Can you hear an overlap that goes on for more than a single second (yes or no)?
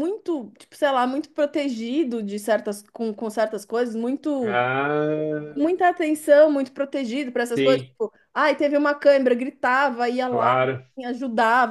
no